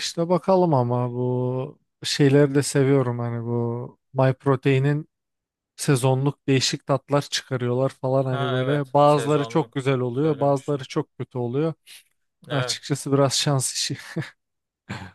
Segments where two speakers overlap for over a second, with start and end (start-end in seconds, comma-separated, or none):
8.3-10.8